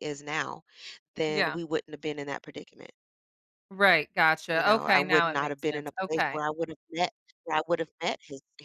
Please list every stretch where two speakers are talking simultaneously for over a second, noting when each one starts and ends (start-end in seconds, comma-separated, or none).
4.5-6.4